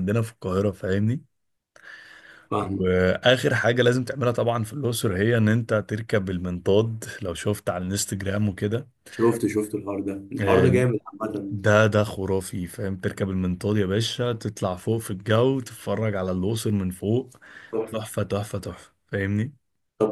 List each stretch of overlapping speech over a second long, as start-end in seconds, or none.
none